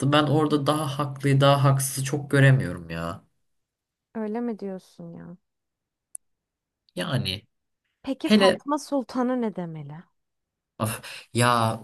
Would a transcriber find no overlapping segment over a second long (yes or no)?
yes